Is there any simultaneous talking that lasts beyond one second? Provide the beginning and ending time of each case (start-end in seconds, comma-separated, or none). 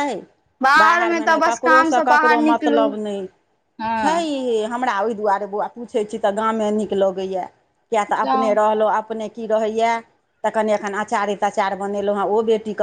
0.8-2.8